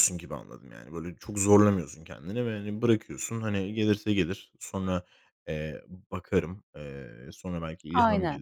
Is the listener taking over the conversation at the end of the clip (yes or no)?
no